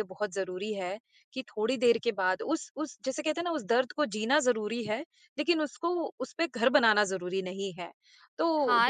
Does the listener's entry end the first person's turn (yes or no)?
yes